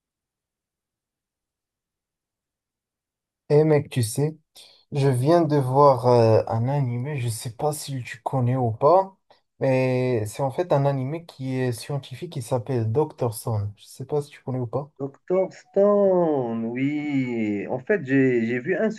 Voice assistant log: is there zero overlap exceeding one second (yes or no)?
yes